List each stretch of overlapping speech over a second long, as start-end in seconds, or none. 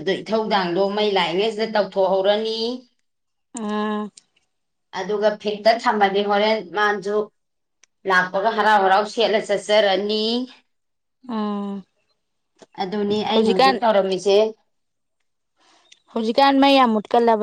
none